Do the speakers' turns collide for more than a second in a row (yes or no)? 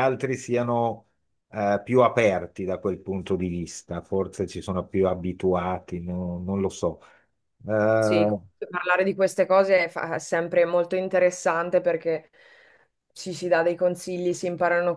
no